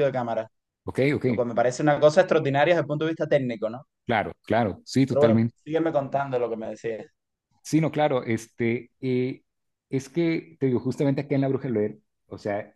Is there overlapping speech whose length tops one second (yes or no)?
no